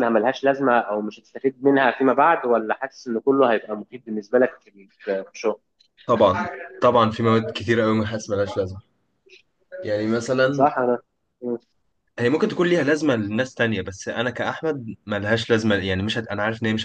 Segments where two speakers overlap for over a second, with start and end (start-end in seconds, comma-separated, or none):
none